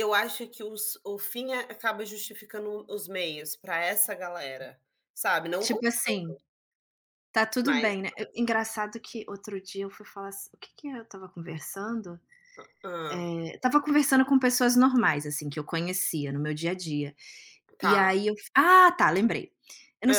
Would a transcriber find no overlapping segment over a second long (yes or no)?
yes